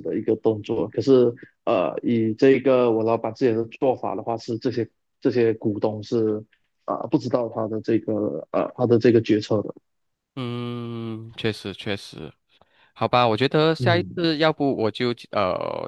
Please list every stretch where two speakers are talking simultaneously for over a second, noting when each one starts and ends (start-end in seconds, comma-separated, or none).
none